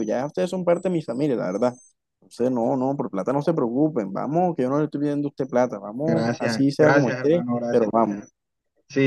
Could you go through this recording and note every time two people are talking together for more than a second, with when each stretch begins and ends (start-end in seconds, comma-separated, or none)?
6.0-7.9